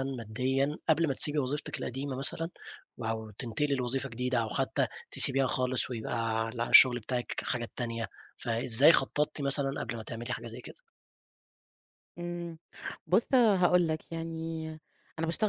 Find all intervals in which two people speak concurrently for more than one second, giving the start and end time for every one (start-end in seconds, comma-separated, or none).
none